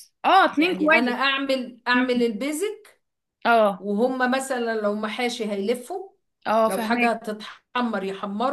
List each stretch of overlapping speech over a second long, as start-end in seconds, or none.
none